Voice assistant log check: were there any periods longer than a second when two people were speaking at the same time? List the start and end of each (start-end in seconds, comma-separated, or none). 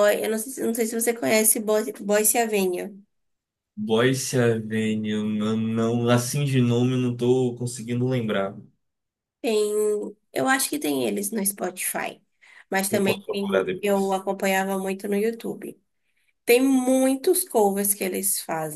12.9-14.2